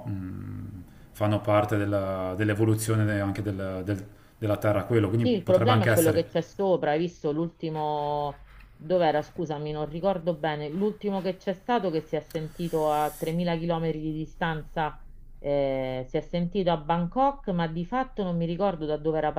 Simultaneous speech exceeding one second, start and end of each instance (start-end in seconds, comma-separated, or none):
5.2-6.4